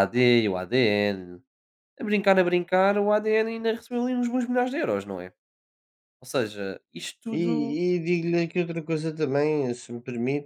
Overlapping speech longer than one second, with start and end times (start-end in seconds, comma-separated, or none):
none